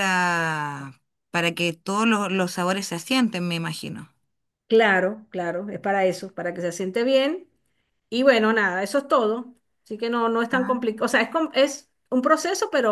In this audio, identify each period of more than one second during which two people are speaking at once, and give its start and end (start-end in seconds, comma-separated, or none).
none